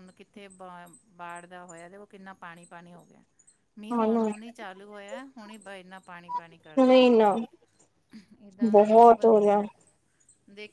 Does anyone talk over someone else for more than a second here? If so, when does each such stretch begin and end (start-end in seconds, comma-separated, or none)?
none